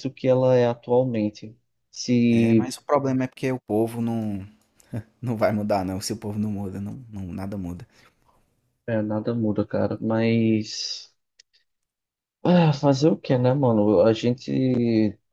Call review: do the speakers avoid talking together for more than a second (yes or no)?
yes